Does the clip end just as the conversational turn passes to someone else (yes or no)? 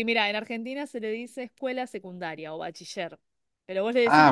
yes